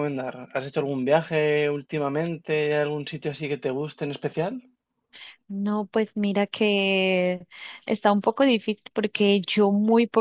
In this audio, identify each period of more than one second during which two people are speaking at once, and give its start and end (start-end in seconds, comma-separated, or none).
none